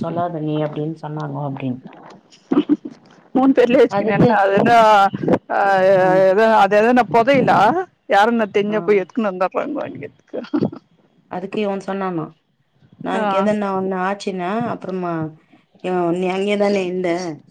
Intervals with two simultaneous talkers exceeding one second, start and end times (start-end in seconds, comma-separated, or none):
none